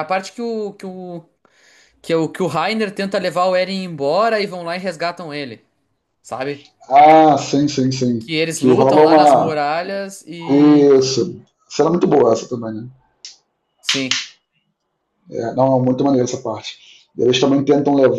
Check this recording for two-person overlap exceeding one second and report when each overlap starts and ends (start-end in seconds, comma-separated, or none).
8.2-9.6